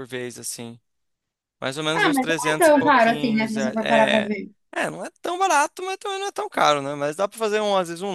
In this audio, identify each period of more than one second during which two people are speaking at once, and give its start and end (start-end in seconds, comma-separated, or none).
1.9-4.3